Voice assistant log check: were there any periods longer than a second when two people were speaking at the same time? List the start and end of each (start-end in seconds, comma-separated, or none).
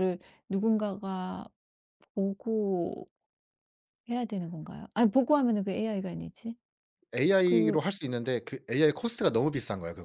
none